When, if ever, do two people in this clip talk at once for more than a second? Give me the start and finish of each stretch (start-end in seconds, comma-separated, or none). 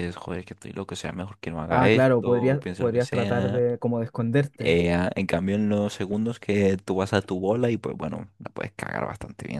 1.7-3.7